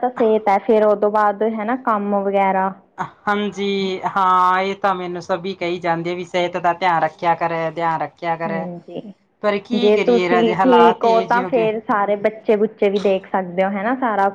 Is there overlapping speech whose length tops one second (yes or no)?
yes